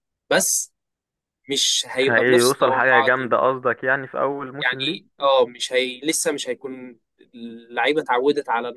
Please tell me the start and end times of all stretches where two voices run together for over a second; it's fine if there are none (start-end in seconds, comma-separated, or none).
1.9-3.4